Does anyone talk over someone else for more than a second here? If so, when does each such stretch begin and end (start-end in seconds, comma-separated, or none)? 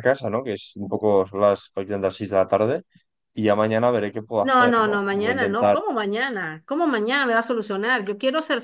4.4-5.8